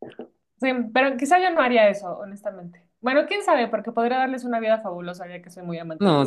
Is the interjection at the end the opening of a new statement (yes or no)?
yes